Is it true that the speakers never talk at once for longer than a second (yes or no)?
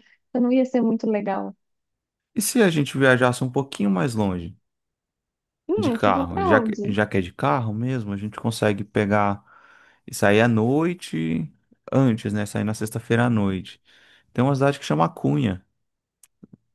no